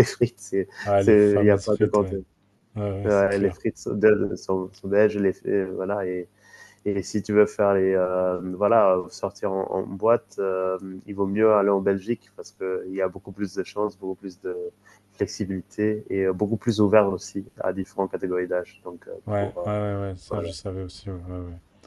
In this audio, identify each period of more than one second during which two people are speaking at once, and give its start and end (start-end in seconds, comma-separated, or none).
0.8-2.2